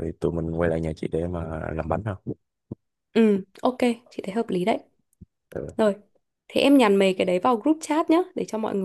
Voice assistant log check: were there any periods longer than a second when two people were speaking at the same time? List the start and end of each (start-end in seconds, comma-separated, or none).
none